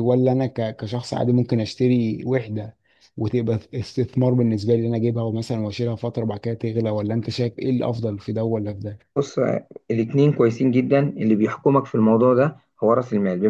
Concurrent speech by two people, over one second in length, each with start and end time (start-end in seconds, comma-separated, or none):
none